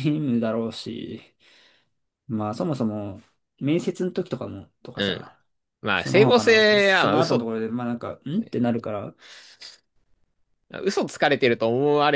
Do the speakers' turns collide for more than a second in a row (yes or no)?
yes